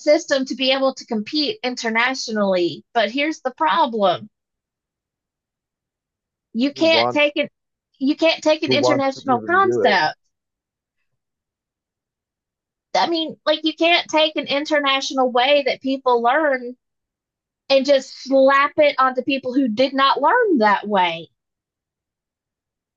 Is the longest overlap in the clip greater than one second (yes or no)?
yes